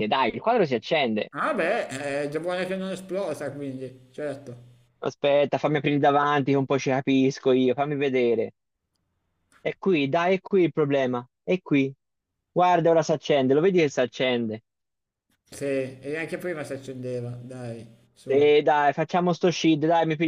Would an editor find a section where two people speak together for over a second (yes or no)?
no